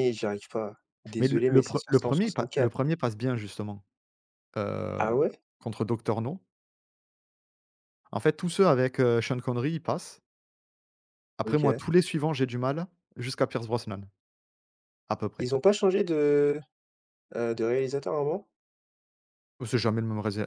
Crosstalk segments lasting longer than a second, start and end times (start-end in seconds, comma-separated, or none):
1.2-2.8